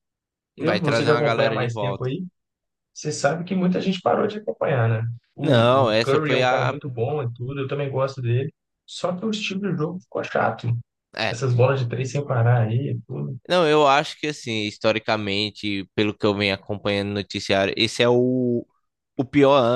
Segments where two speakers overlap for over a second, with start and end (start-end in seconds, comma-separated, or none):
0.6-2.1, 5.4-6.8